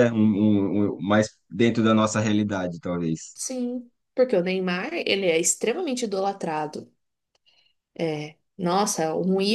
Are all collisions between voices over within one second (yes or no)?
yes